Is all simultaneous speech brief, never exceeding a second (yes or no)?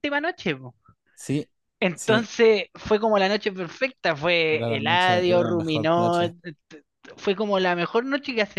no